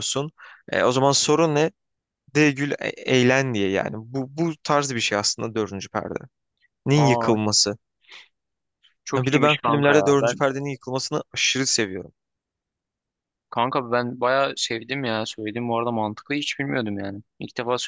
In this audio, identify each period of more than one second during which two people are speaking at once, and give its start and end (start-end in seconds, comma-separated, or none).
9.2-10.4